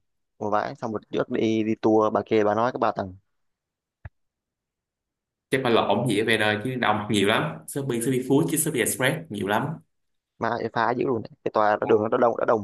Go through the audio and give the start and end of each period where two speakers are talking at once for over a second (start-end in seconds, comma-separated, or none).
none